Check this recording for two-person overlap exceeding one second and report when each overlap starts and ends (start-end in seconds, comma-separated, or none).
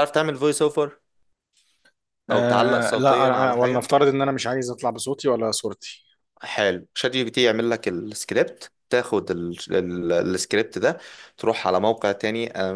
2.3-3.9